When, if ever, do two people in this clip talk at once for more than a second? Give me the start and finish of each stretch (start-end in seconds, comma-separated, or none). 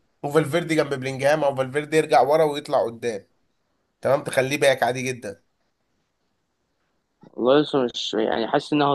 none